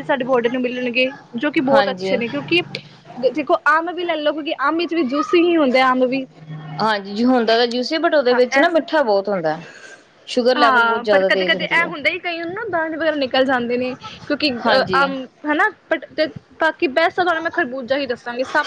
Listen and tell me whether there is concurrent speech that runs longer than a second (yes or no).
yes